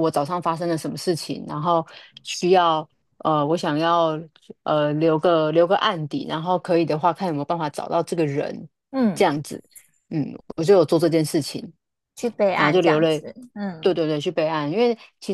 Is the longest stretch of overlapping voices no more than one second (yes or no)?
yes